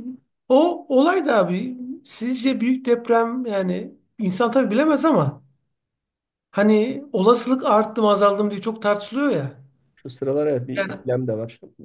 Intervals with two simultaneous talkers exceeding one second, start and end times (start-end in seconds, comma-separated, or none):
none